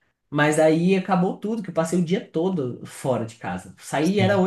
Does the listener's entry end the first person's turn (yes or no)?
no